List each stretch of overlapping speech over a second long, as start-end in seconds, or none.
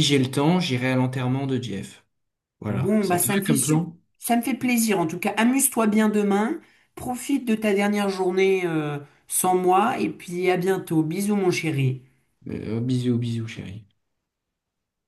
2.7-4.0